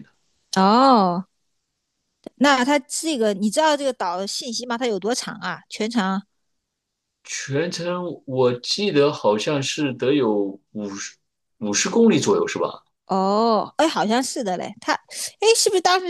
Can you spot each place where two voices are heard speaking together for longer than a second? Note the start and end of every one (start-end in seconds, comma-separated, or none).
none